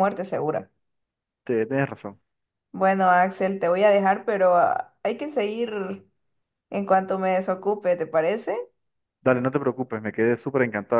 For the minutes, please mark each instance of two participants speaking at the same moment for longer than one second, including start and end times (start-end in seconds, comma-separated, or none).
none